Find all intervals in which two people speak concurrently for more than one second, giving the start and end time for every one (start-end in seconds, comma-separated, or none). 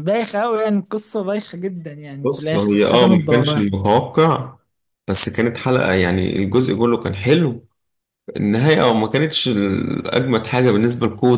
2.2-3.6